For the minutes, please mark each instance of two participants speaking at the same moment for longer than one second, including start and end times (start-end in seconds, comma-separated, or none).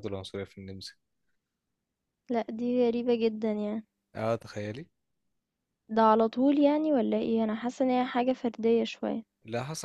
none